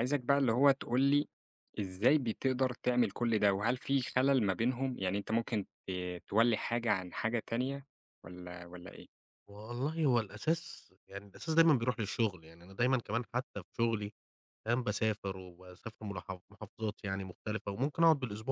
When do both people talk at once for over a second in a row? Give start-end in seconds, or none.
none